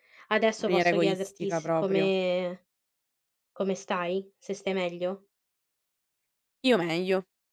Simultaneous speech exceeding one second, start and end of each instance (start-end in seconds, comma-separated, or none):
0.6-2.1